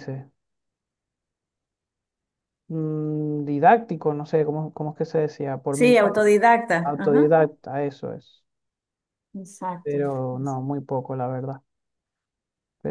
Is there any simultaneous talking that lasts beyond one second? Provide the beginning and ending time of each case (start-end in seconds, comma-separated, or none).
none